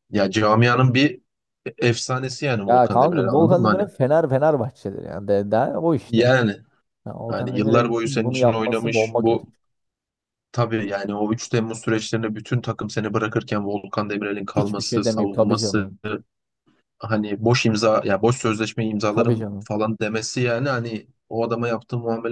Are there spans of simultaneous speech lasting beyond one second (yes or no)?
yes